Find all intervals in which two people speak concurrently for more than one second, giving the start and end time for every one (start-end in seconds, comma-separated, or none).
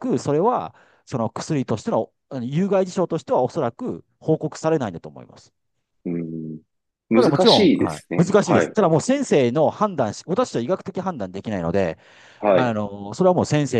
7.1-8.8